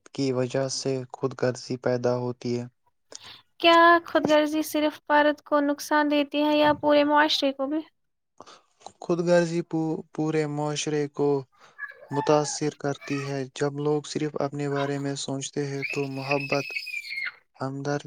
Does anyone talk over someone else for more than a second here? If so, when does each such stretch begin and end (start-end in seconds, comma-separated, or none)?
none